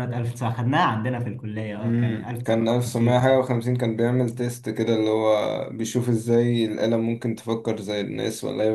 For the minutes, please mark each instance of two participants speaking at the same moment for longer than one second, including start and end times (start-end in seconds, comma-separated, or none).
1.8-3.4